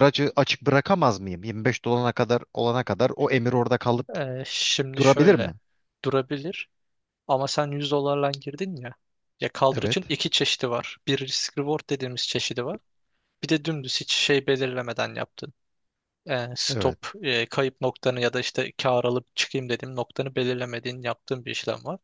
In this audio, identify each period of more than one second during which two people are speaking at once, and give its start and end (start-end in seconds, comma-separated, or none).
none